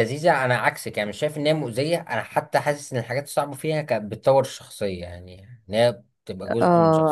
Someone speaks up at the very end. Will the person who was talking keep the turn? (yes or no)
no